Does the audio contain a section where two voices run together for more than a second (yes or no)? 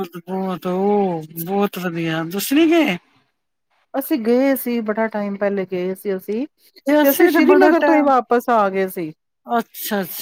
no